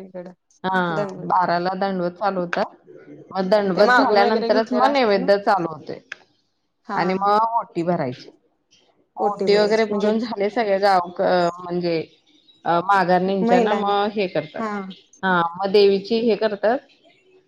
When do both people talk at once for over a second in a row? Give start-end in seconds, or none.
3.8-5.3